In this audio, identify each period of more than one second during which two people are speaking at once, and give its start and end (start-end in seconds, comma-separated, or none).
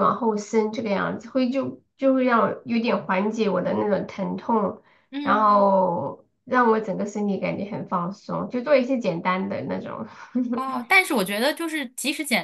none